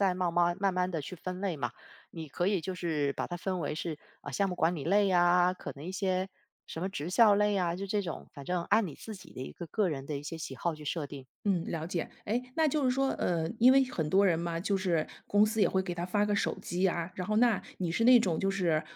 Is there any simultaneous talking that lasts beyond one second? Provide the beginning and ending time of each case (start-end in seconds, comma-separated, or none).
none